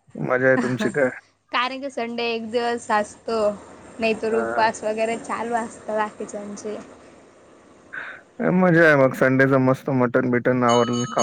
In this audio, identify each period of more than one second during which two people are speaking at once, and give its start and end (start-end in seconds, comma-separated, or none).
none